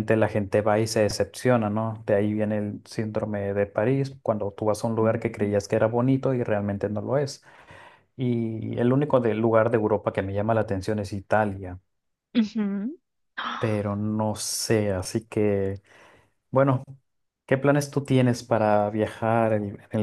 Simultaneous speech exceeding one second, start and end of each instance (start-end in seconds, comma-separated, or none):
none